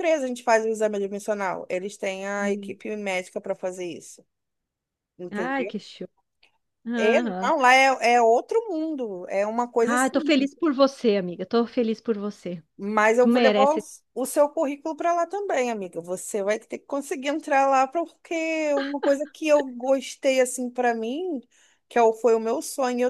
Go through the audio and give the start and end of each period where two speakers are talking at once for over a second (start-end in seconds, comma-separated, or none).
none